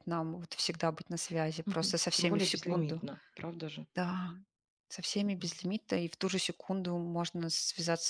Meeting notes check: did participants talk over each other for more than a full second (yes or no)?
yes